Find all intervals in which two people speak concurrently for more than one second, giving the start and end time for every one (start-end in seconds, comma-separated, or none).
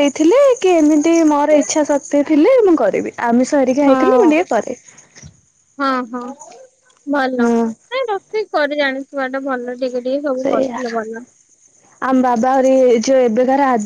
none